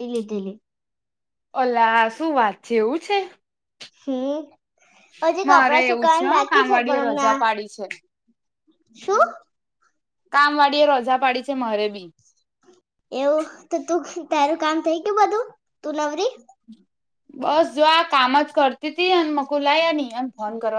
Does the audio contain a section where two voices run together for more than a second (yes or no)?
yes